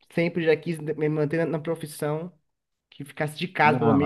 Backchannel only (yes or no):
yes